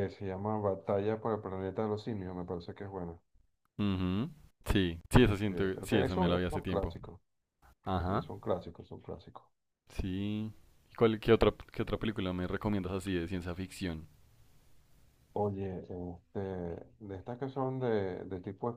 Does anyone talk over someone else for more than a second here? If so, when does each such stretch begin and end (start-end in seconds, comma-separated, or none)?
5.2-7.0